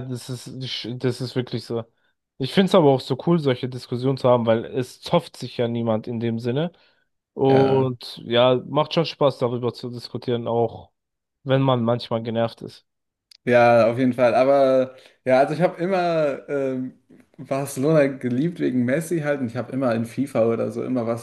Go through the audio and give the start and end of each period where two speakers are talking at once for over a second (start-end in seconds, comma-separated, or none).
none